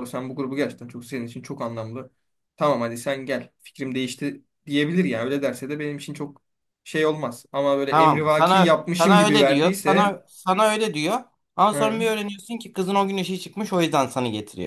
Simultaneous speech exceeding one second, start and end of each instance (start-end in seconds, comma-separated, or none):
7.9-10.2